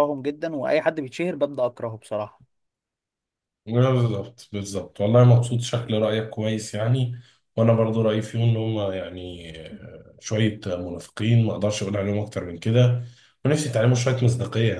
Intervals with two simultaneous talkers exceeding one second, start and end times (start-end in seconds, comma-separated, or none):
none